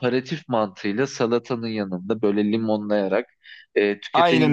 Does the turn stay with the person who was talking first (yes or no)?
yes